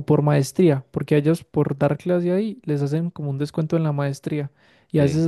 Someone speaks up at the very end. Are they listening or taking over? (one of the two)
listening